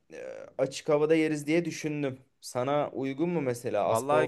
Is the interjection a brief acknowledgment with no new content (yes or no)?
no